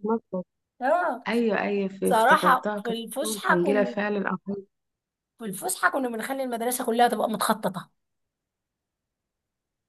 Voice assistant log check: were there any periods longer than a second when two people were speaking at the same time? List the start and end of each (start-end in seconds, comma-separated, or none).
2.0-4.0